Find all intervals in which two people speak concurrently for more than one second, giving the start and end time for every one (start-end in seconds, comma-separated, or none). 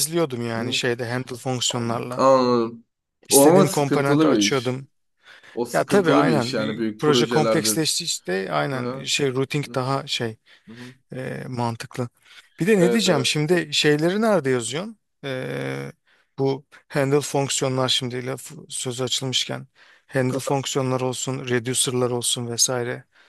3.3-4.8, 5.7-7.8